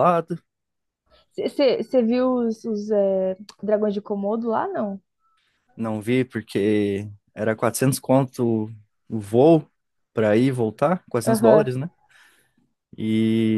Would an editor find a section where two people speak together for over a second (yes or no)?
no